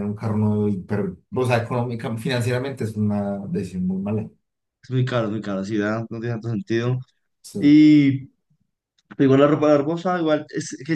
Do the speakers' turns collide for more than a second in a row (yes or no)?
no